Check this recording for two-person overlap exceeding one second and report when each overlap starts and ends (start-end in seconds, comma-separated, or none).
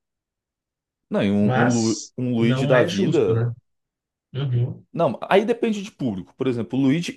1.4-3.5